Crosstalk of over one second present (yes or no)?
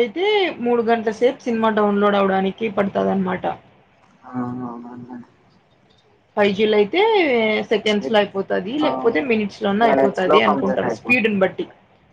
yes